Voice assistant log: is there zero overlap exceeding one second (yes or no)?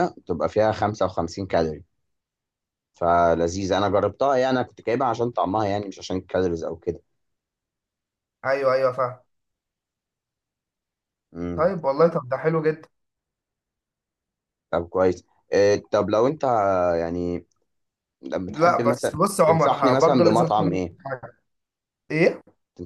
no